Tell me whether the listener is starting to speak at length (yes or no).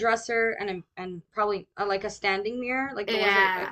yes